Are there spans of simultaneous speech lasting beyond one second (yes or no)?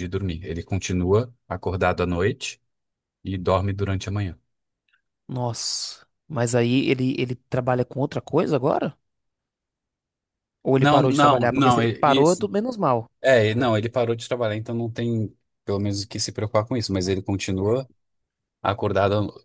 yes